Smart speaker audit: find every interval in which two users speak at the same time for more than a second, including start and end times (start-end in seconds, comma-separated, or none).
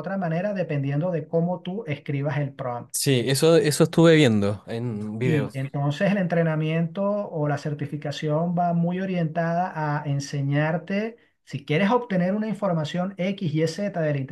none